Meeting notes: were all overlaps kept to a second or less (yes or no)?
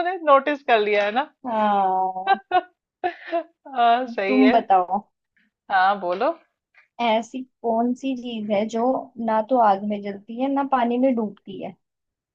yes